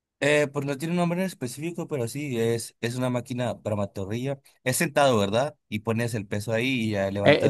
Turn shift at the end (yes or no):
yes